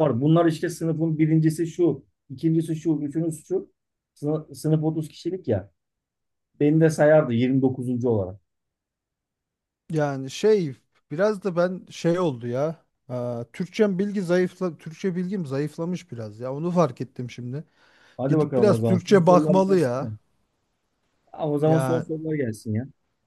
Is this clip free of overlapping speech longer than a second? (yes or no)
no